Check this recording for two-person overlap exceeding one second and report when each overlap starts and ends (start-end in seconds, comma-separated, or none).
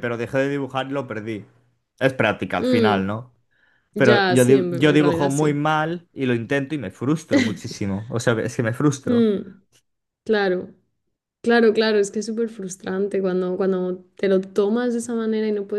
3.9-5.6